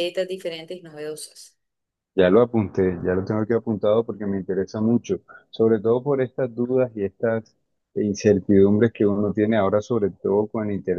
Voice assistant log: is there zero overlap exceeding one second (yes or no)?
yes